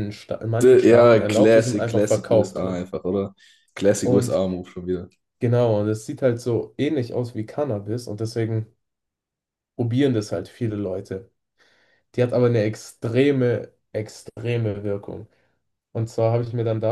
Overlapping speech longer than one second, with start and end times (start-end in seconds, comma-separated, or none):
0.6-2.9